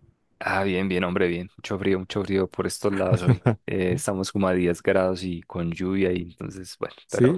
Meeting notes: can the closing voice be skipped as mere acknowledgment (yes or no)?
no